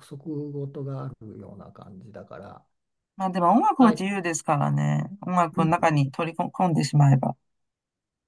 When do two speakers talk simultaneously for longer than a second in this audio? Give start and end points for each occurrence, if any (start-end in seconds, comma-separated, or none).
none